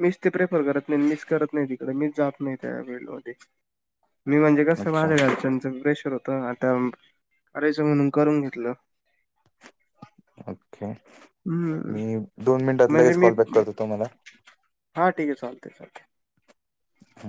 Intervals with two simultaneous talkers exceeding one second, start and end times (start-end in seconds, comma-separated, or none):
none